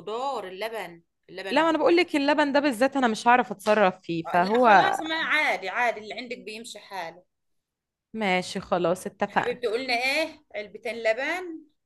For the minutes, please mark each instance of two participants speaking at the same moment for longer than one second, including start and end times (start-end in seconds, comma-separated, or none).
none